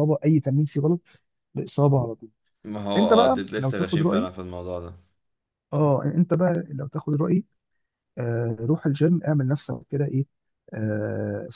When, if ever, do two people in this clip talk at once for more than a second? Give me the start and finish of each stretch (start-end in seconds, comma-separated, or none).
3.0-4.3